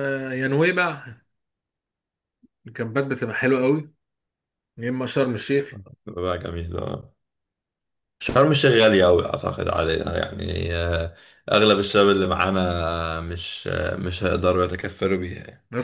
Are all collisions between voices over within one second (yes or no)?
yes